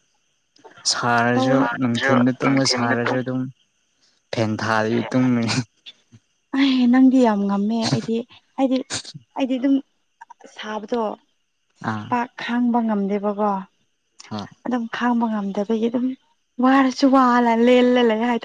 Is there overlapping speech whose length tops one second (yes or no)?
yes